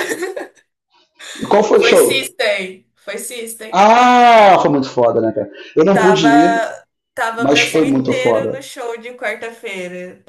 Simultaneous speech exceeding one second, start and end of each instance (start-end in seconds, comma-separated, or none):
7.4-8.6